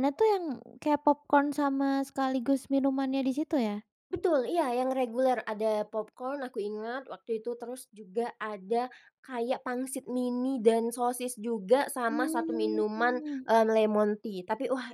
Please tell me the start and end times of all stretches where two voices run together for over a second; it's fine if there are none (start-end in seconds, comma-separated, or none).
12.1-13.4